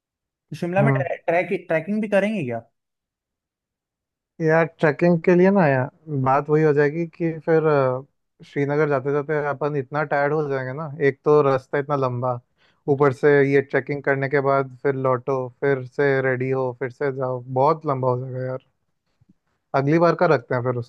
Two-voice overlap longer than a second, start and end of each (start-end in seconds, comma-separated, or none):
none